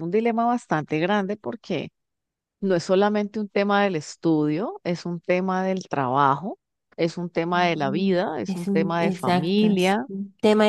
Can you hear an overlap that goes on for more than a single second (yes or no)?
yes